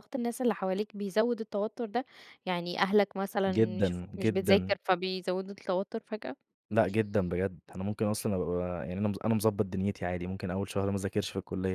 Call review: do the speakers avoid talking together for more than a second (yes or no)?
no